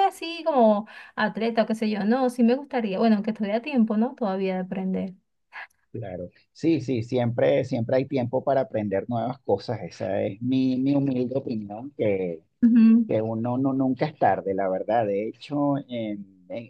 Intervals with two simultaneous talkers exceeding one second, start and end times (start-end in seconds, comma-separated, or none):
none